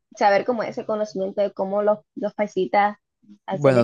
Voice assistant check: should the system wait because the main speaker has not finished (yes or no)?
no